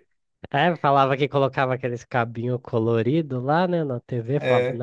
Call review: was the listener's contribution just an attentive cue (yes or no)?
yes